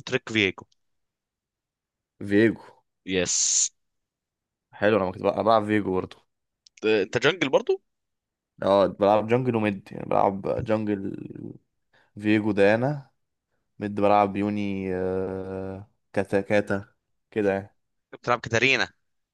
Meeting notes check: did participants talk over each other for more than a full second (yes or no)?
no